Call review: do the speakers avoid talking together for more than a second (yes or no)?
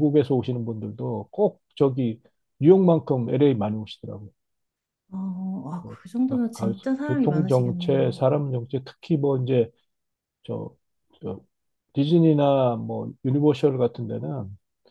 no